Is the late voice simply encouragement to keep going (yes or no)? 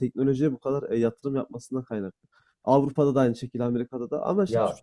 yes